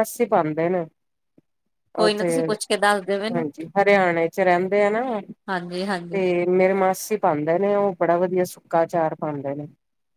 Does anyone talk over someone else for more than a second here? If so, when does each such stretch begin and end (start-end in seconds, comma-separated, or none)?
none